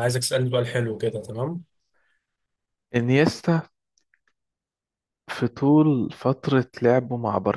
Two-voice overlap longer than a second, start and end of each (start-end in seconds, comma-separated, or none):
none